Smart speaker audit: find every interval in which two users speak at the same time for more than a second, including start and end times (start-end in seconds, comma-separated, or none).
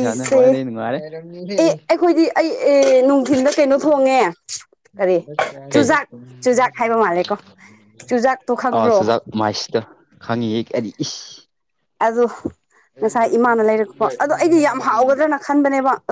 none